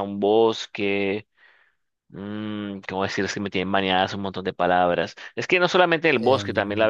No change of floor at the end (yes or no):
yes